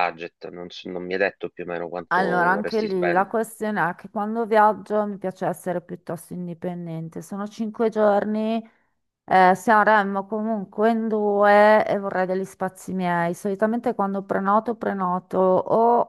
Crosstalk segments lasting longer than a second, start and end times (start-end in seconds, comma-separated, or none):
2.1-3.4